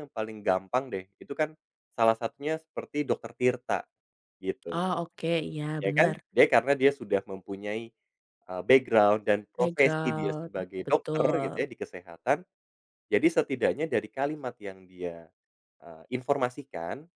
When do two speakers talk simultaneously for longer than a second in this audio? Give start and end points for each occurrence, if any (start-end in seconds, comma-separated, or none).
9.6-11.6